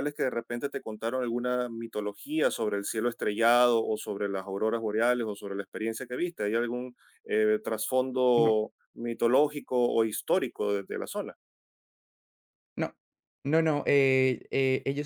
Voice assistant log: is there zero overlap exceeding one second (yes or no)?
yes